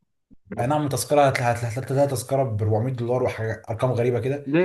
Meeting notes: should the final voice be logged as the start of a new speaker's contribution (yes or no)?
yes